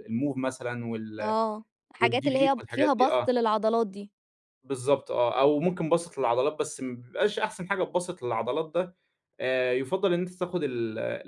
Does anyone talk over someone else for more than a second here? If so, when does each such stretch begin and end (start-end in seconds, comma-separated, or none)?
2.0-3.3